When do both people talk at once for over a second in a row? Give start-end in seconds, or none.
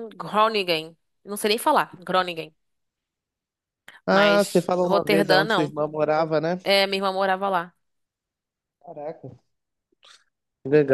4.1-5.7